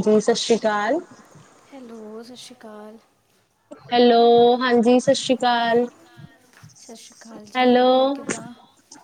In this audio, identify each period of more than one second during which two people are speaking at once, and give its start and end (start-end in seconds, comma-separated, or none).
none